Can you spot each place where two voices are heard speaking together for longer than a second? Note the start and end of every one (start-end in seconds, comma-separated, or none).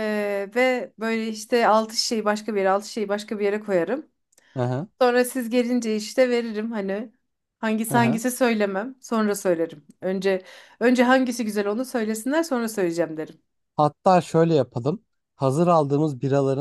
none